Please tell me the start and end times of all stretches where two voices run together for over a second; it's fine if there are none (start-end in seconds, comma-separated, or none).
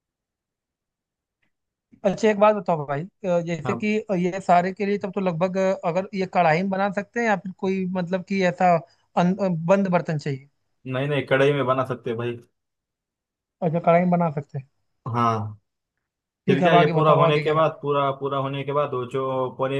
16.5-17.9